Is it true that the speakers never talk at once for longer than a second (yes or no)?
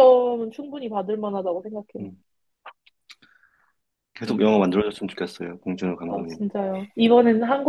yes